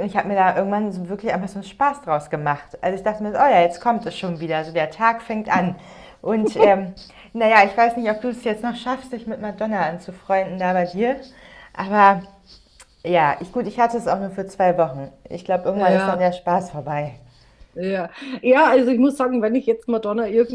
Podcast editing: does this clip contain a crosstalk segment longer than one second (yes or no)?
no